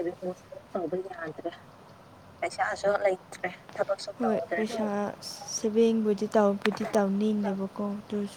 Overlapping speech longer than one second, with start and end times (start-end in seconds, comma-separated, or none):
none